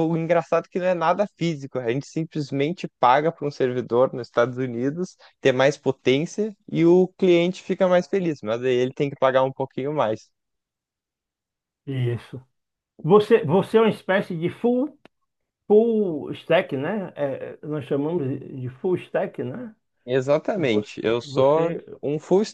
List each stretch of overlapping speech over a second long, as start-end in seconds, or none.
20.5-21.8